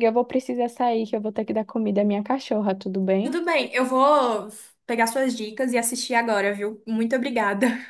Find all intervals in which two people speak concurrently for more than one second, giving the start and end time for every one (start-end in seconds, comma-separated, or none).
none